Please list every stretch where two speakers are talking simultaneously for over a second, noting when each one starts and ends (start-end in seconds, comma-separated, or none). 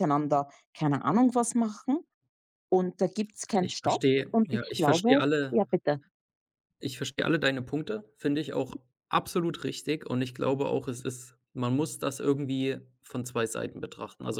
3.6-5.6